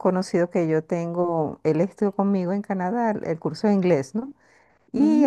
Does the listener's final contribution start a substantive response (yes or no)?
no